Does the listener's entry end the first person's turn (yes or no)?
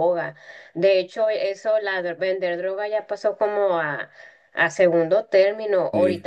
no